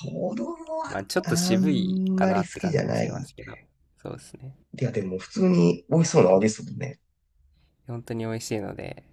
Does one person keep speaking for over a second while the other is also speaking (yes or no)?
yes